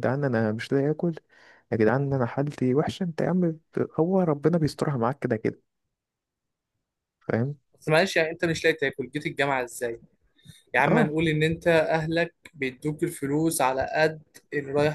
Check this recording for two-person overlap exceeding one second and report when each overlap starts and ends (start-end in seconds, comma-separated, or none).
none